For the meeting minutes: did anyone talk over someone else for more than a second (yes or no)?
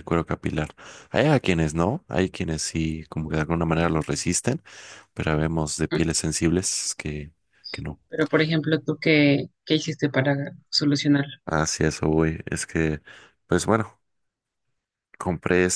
no